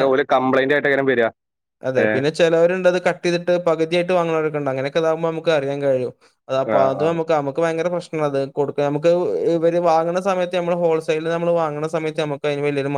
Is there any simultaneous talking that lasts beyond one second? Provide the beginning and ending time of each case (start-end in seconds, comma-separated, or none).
none